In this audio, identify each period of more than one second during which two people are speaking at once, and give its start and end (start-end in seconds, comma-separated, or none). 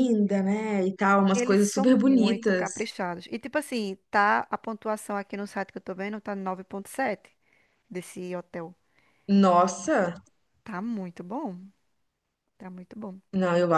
1.3-2.7